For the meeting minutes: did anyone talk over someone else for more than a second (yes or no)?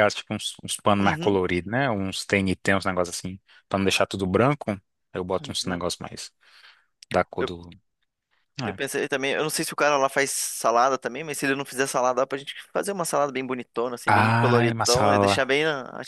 yes